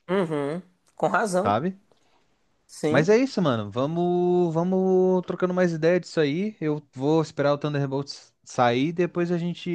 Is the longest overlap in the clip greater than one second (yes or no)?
no